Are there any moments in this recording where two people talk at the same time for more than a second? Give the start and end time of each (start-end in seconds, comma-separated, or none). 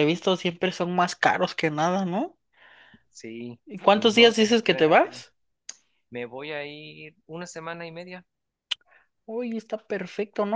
3.7-5.2